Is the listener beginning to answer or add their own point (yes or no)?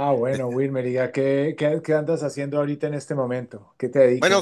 yes